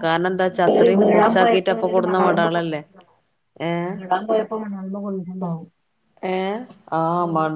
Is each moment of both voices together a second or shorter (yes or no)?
no